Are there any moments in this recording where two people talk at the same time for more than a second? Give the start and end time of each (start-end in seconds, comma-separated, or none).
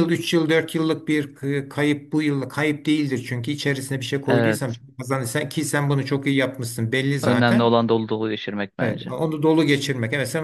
none